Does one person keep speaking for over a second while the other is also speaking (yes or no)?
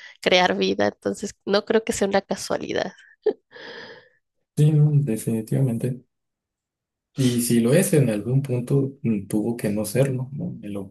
no